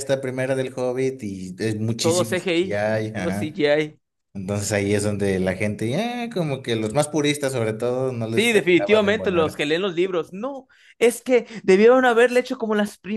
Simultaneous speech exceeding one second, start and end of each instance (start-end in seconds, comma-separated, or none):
2.0-3.6, 8.3-9.7